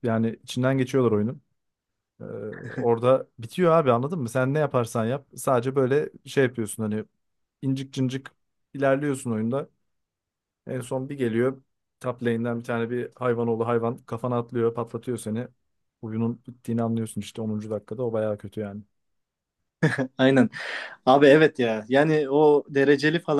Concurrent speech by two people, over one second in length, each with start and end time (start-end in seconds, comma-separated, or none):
none